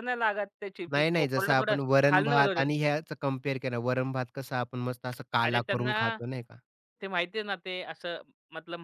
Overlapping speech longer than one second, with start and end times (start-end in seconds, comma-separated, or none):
0.9-2.7